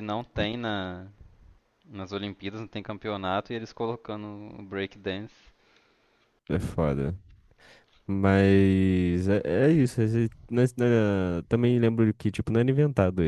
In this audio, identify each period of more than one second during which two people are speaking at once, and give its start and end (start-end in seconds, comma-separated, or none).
none